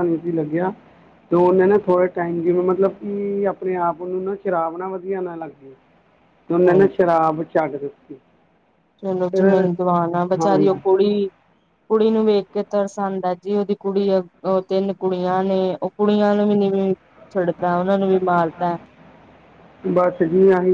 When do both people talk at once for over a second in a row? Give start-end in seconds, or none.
none